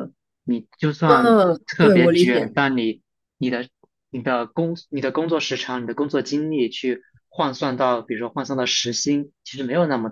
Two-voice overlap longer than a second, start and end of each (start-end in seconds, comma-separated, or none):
1.1-2.7